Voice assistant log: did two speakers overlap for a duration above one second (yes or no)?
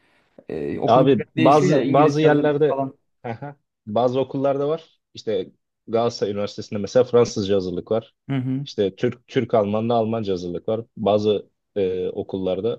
yes